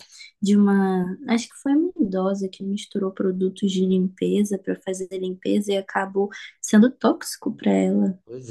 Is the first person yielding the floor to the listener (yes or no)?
no